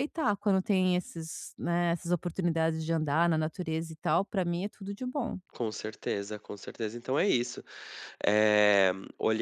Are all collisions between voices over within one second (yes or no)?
yes